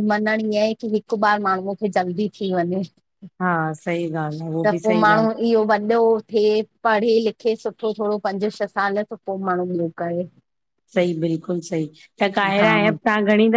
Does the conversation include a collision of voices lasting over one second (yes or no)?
no